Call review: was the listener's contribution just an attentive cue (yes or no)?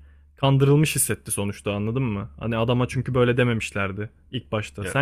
yes